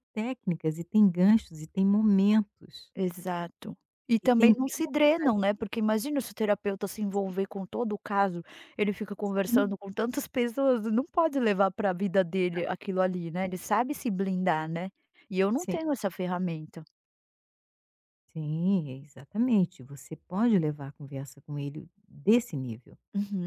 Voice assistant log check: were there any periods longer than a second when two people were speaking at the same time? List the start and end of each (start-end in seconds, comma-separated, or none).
4.2-5.7